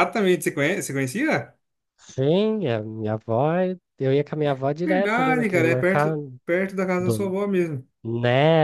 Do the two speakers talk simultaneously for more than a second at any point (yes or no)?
yes